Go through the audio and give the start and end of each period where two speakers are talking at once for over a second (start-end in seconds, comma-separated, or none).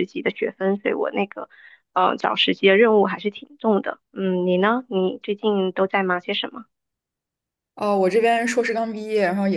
none